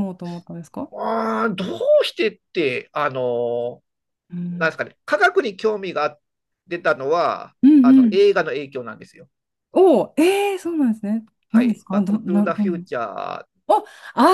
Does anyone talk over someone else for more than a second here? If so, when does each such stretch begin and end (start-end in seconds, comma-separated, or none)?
11.5-12.8